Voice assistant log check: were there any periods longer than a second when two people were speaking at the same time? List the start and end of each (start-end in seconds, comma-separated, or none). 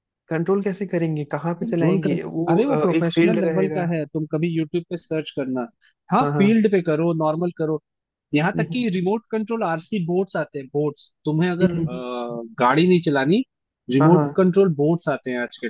1.6-3.9